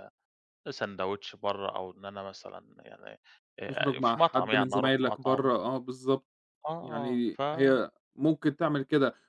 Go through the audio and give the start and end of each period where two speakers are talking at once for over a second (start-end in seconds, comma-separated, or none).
3.6-5.5